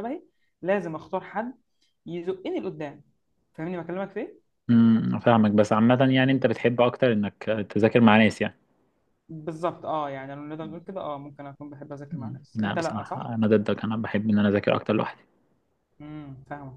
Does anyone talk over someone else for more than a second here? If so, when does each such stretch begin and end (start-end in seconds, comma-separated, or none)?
12.1-13.3